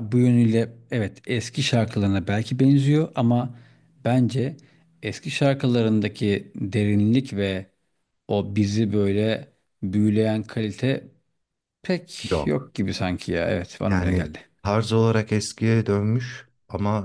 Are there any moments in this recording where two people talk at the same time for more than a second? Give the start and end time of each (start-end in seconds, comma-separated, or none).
none